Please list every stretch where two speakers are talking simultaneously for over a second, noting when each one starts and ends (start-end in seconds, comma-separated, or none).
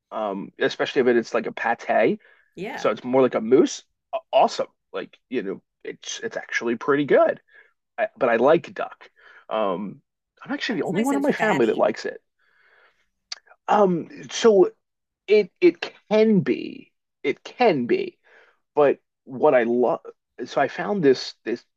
10.7-11.9